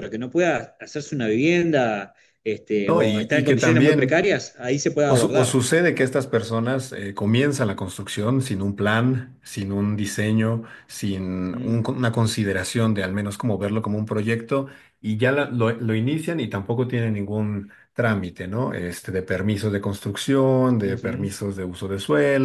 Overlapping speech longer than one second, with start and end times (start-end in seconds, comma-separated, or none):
2.9-4.2